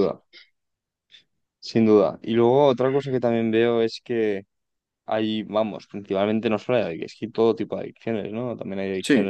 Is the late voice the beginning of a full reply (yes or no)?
no